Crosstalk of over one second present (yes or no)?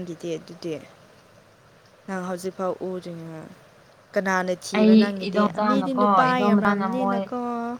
yes